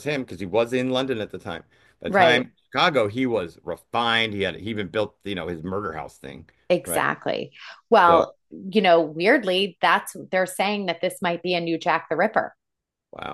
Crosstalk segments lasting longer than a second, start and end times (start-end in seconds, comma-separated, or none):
none